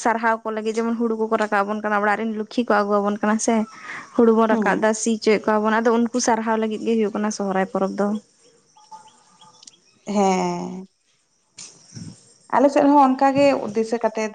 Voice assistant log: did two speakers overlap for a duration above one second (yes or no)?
no